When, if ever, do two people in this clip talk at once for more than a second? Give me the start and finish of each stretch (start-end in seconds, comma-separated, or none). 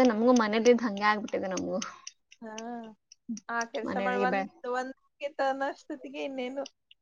none